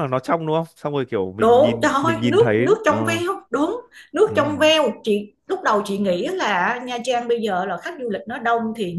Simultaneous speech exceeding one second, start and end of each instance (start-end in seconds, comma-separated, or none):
1.4-3.2